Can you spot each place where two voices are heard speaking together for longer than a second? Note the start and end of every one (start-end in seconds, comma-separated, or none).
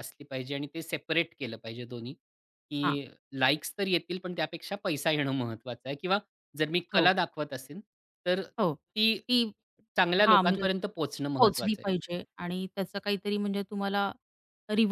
none